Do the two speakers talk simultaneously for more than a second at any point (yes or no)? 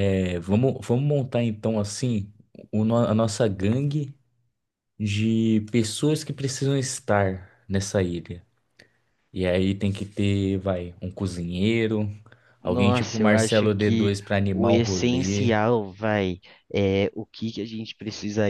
yes